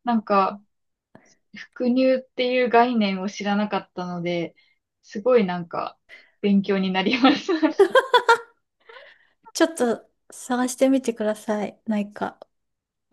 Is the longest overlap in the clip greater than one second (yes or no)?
no